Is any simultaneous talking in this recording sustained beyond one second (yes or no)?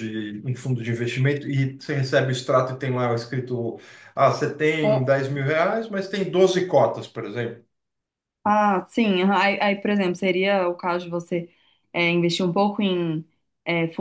no